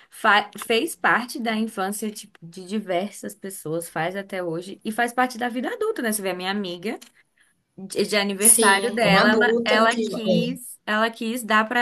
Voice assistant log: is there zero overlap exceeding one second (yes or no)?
no